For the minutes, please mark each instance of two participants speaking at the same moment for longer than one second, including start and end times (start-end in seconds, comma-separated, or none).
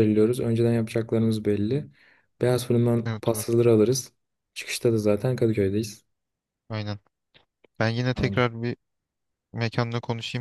none